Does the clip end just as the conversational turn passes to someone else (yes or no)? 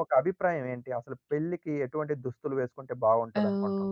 yes